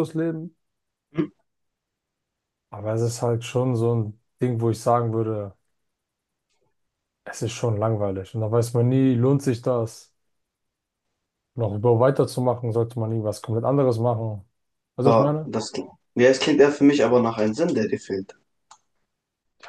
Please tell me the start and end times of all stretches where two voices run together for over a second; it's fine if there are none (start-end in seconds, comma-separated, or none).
none